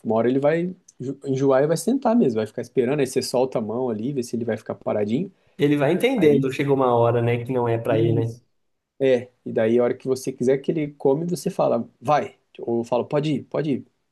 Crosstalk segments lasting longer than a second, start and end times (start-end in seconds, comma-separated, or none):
none